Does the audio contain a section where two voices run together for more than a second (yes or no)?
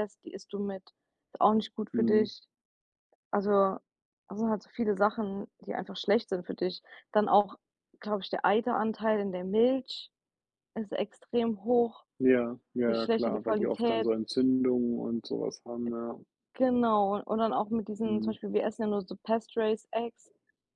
yes